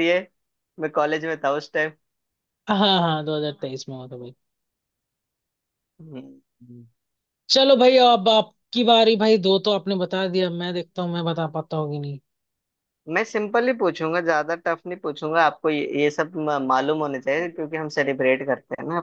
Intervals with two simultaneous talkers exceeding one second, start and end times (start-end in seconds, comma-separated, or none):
none